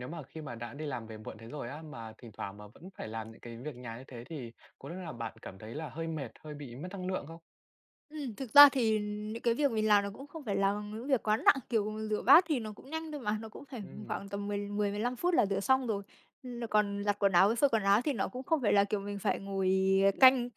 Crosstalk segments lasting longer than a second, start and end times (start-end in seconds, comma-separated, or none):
none